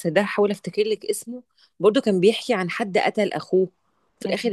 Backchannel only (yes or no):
yes